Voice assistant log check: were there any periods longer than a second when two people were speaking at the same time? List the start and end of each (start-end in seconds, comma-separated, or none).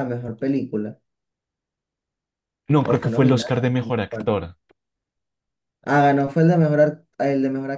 2.8-4.3